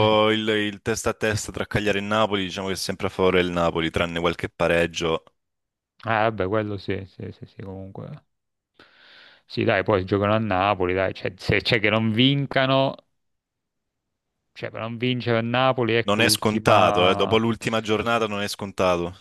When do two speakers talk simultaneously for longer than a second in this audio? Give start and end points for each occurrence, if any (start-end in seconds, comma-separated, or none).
16.1-17.4